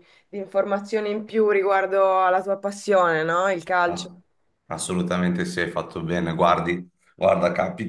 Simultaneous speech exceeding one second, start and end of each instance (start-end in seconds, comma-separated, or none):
none